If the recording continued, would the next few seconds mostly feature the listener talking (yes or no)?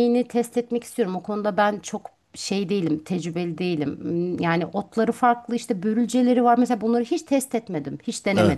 yes